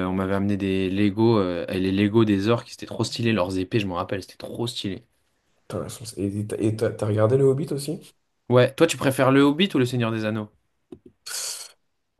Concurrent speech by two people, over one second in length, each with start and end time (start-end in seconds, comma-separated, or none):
none